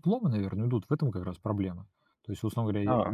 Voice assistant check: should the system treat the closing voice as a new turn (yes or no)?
no